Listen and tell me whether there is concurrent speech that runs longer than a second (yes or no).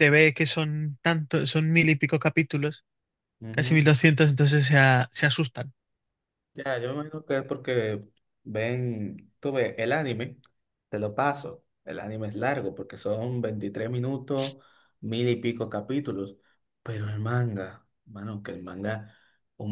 no